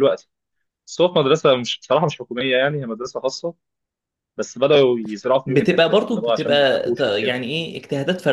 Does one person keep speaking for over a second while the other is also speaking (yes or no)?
yes